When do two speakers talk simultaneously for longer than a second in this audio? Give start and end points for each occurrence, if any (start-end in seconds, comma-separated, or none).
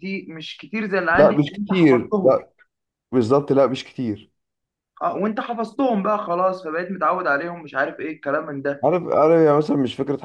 1.1-2.4